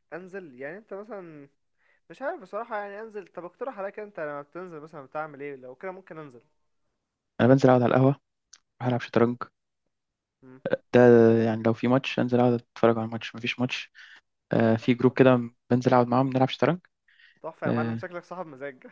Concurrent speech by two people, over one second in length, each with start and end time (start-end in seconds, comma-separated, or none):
none